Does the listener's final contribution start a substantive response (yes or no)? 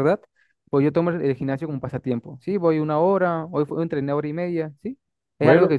no